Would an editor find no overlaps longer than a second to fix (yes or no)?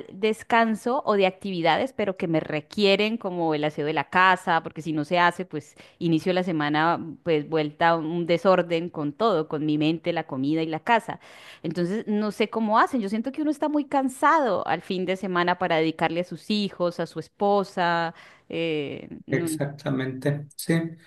yes